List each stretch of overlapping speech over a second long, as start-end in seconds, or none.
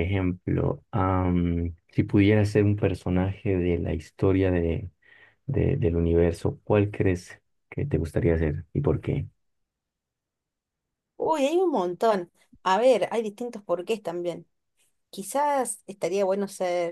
none